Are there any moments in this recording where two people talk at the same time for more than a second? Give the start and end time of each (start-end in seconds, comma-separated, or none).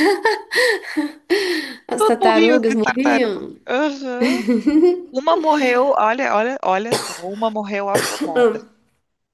1.9-3.5